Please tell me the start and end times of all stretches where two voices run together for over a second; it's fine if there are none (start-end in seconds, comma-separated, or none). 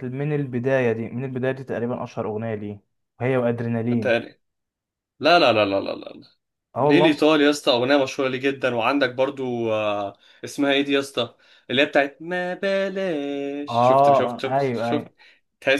13.7-15.1